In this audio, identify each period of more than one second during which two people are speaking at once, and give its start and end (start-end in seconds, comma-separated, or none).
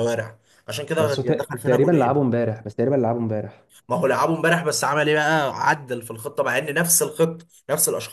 1.0-2.4